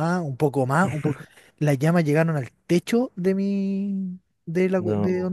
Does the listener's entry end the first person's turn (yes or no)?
no